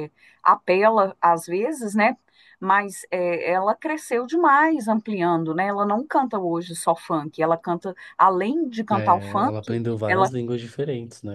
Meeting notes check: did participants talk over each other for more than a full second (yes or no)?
yes